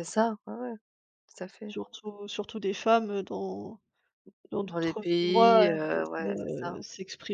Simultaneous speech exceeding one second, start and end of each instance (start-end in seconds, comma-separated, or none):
4.6-6.8